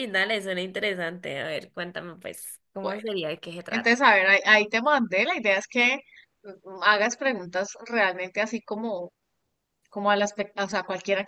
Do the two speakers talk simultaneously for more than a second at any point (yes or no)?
no